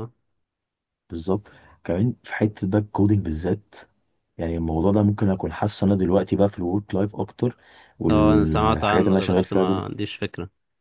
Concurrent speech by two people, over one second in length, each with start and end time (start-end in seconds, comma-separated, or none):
8.1-9.8